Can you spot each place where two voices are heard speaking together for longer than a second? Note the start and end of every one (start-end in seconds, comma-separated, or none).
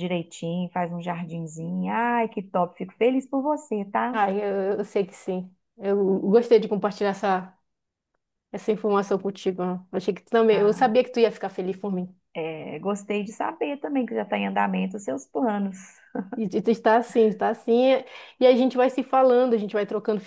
none